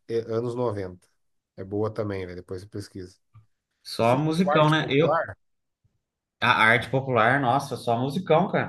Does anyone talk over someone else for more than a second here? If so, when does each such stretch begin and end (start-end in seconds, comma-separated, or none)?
4.0-5.2